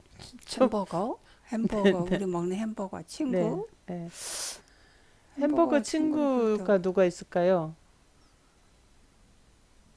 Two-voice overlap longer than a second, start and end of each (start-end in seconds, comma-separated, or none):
5.4-6.6